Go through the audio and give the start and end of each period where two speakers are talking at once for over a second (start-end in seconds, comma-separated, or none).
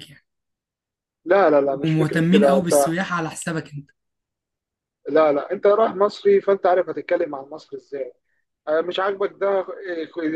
1.6-2.9